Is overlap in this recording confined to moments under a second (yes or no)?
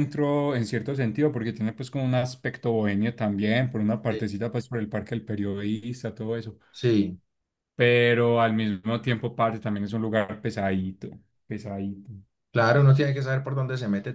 yes